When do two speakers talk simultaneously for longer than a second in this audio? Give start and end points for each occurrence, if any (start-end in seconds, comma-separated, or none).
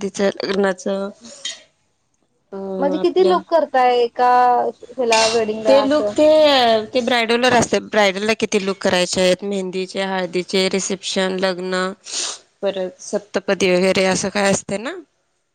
none